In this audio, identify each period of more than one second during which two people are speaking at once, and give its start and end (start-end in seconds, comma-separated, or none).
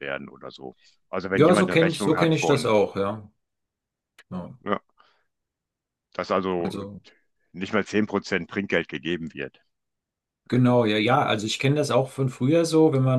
1.3-2.7